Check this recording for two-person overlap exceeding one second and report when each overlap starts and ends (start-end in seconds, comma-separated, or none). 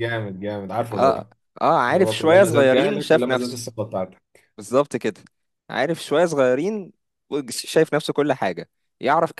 1.9-3.6